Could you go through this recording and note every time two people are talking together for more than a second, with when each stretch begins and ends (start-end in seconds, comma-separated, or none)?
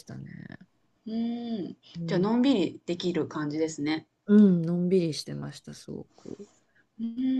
none